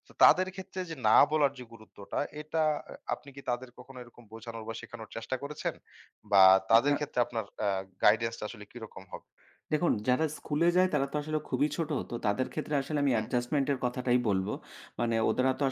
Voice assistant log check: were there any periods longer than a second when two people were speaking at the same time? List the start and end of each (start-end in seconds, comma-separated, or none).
none